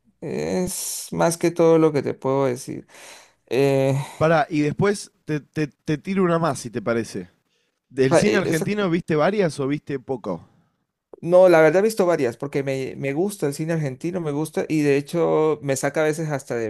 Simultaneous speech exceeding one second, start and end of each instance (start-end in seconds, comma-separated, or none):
none